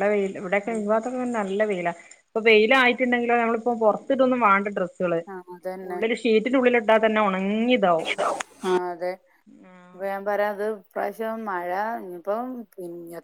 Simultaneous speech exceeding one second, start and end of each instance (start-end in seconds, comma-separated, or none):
none